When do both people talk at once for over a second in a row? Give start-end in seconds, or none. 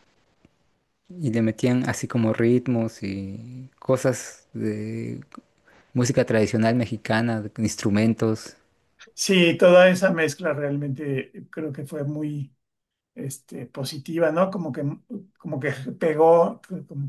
none